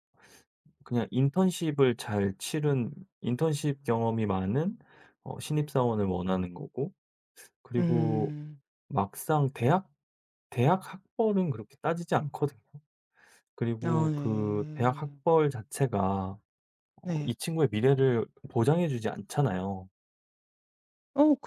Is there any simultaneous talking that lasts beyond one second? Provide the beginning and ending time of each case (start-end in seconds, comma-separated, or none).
13.9-15.2